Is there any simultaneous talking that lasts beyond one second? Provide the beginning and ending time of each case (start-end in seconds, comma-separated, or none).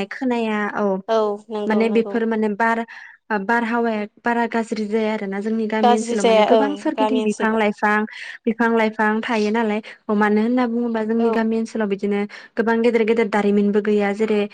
5.8-7.6